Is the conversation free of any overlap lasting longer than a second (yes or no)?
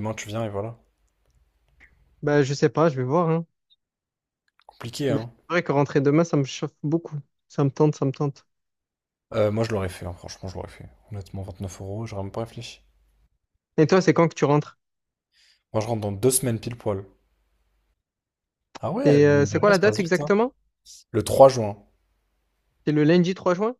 no